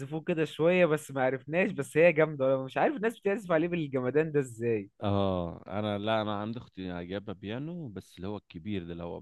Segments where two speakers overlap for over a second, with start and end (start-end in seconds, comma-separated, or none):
none